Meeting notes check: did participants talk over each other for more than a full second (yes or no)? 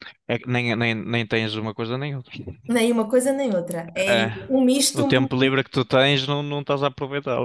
no